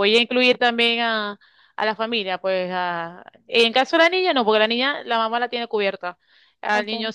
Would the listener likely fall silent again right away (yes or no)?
yes